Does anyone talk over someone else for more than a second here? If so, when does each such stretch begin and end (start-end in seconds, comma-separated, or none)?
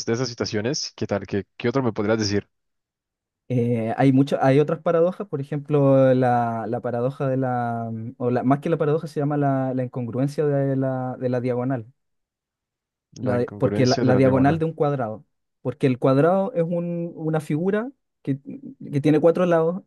13.2-14.6